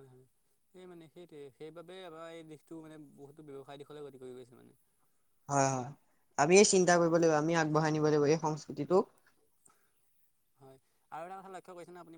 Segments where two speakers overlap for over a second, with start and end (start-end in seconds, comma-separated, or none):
none